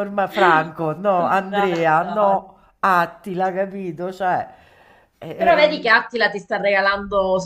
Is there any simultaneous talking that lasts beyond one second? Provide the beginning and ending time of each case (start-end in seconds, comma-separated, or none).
1.1-2.5